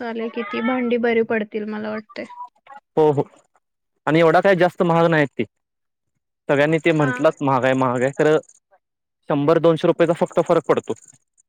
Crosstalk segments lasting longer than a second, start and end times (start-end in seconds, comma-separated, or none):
none